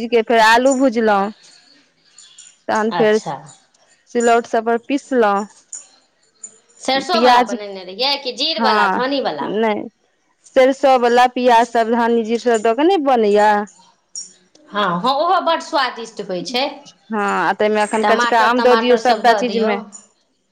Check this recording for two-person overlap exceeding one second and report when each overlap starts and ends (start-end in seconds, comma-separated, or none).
18.0-19.7